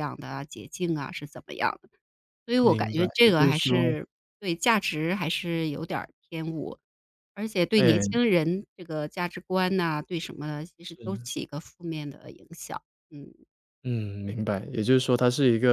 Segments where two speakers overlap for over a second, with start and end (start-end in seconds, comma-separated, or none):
2.6-4.0